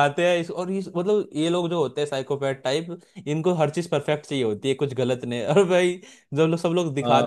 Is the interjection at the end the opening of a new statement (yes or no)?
no